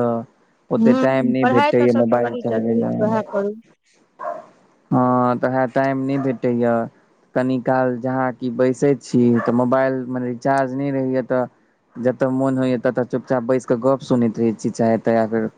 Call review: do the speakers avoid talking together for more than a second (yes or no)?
no